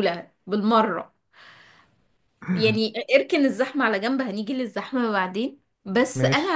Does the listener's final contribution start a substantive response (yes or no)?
no